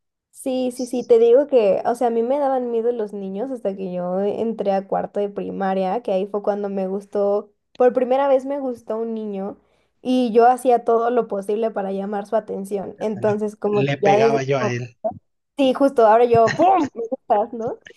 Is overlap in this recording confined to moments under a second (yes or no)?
no